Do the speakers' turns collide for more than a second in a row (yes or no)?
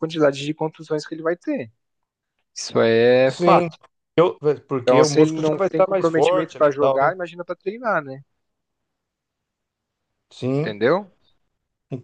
yes